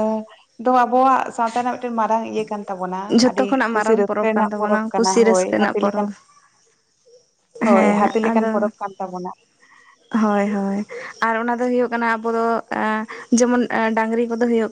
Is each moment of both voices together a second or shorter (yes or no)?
no